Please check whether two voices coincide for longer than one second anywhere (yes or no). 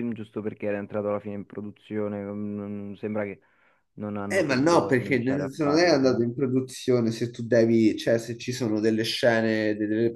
yes